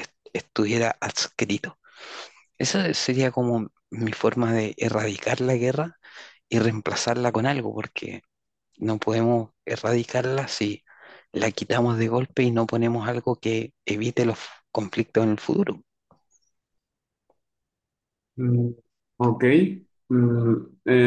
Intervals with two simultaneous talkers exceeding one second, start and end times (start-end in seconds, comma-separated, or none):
none